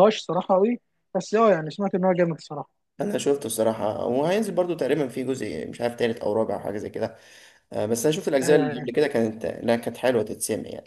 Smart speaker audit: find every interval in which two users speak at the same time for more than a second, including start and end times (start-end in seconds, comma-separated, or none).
none